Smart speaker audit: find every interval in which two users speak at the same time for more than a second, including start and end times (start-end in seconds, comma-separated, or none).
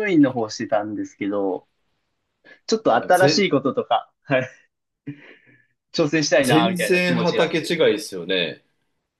6.4-7.8